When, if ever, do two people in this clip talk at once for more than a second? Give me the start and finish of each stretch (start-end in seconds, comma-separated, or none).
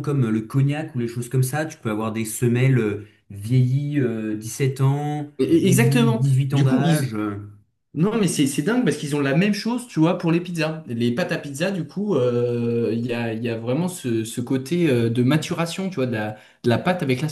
5.4-7.1